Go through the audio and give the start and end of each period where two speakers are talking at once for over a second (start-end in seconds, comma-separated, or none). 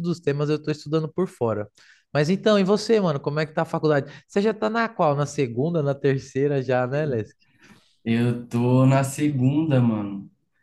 none